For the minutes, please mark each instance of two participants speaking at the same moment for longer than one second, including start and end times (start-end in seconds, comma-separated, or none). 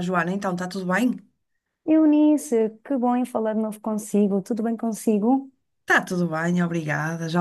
none